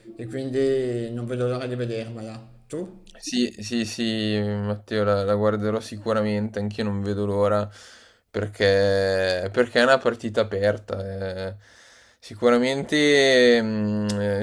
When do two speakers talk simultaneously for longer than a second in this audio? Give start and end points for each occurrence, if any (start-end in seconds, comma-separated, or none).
none